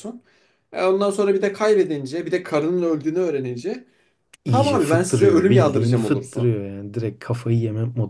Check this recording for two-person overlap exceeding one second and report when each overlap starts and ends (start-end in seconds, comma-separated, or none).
4.5-6.5